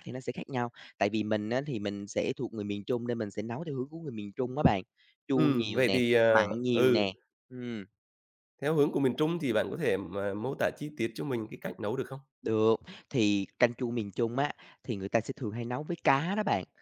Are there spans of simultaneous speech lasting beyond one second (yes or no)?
yes